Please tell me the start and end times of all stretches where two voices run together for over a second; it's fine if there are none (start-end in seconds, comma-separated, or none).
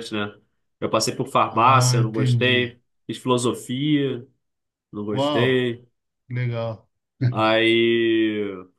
1.5-2.7